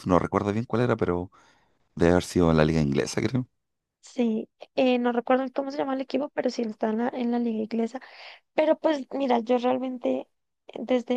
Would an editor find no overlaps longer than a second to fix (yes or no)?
yes